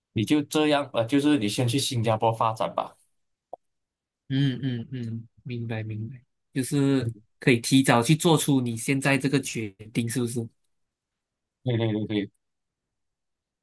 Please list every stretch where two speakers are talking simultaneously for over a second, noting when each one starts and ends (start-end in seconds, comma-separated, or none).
none